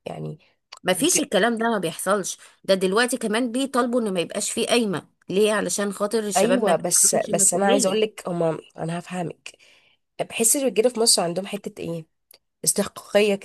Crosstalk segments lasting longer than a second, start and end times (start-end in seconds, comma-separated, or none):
6.3-8.2